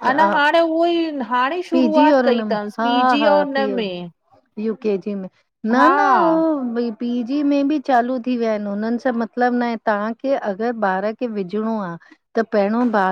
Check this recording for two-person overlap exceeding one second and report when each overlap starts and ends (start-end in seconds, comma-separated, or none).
1.7-3.8